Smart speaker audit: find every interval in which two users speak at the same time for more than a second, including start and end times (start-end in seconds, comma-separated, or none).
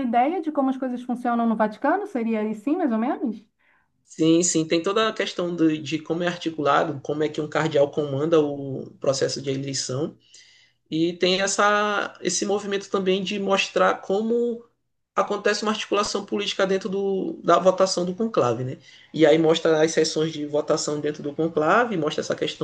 none